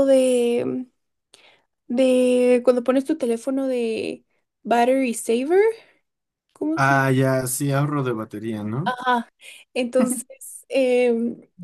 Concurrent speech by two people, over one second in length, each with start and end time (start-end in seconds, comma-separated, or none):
none